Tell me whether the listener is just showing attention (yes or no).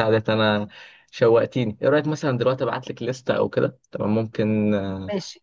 no